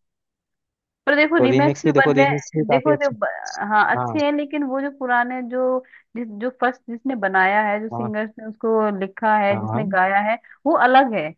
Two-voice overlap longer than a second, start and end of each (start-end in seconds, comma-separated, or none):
1.4-3.1